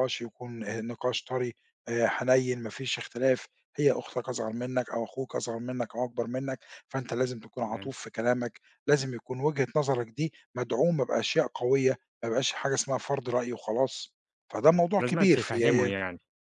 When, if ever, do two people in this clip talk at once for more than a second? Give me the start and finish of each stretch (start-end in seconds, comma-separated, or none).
14.7-15.9